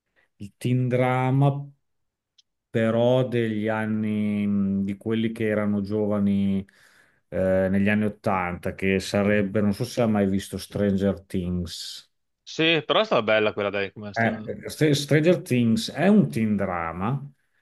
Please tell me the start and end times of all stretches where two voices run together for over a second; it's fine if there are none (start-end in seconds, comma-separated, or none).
none